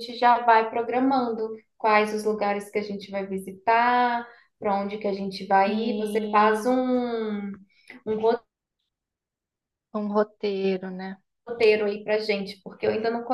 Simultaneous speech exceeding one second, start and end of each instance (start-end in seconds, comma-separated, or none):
5.6-6.8